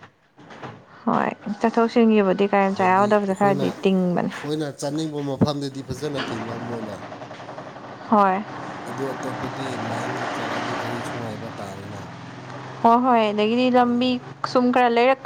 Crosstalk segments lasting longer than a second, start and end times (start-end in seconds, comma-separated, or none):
2.8-4.3